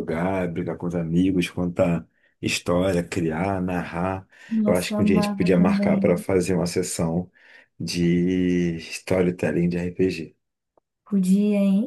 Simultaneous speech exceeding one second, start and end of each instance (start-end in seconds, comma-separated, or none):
4.7-6.2